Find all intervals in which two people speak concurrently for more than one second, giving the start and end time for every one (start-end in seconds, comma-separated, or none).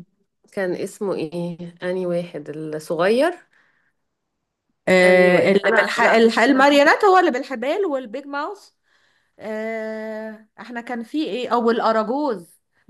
5.0-6.8